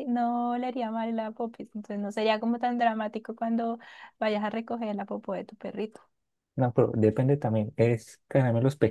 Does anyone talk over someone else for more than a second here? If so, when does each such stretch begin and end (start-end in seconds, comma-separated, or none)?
none